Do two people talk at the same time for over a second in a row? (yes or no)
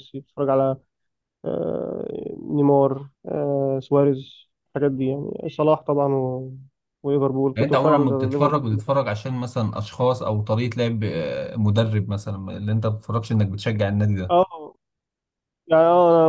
yes